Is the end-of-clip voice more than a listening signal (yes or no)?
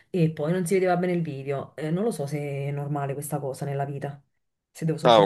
yes